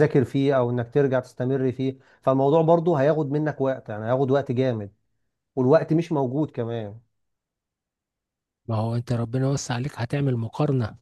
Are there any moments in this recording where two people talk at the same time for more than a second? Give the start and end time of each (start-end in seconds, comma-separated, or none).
none